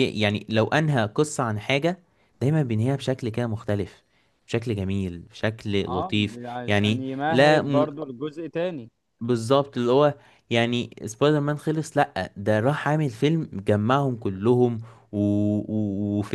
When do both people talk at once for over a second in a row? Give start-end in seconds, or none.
5.9-7.9